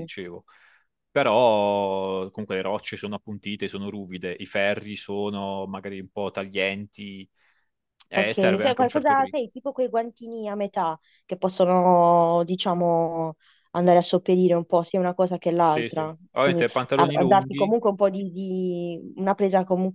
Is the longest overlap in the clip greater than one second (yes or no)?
yes